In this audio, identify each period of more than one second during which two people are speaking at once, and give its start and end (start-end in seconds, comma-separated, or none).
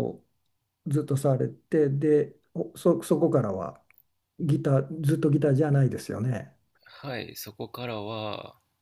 none